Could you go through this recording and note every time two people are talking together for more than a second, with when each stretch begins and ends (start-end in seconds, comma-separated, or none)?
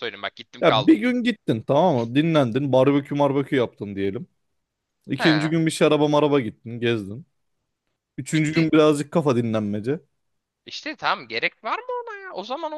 none